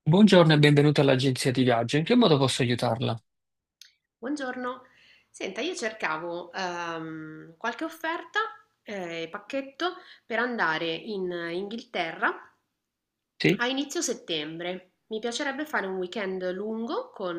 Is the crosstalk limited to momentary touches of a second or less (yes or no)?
yes